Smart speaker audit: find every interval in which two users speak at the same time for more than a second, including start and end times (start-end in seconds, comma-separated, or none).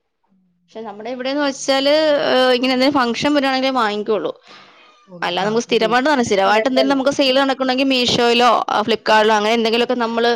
5.3-7.0